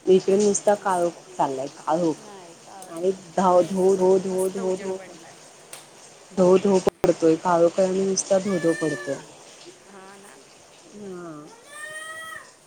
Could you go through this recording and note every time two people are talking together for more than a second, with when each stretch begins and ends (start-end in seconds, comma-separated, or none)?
2.9-5.0